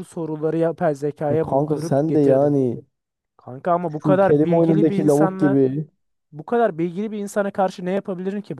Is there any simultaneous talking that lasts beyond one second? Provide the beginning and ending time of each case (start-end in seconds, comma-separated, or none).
1.3-2.6, 4.0-5.6